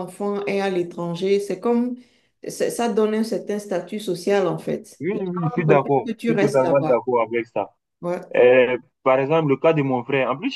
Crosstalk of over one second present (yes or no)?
yes